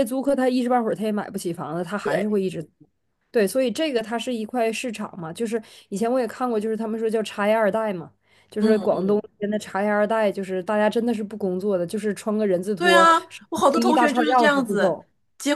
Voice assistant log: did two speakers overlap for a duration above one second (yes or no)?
yes